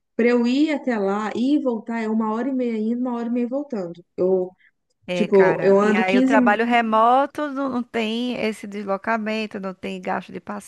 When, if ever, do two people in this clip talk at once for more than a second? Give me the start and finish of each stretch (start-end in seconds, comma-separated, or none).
5.1-6.6